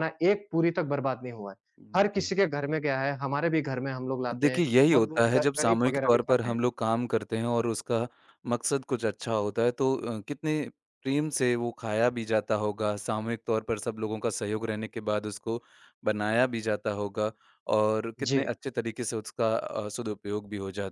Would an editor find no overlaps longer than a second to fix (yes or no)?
no